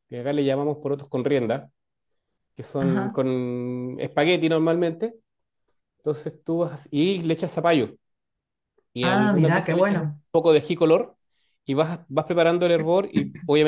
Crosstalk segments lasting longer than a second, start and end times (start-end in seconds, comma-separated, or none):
9.0-10.2